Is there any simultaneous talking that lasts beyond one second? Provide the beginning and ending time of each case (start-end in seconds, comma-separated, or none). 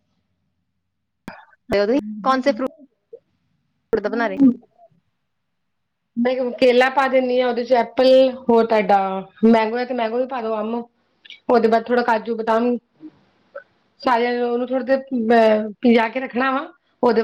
none